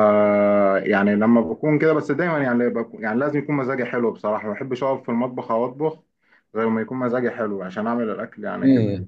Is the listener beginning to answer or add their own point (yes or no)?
yes